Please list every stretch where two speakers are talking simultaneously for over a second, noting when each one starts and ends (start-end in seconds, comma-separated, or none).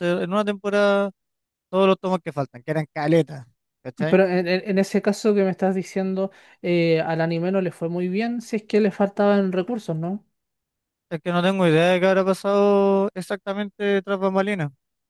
none